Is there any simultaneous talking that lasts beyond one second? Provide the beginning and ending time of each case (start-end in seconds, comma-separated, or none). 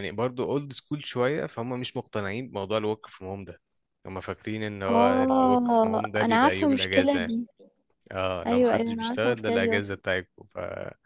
4.9-7.3, 8.5-10.0